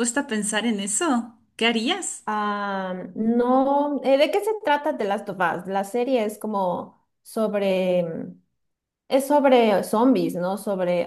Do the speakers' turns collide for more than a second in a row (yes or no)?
no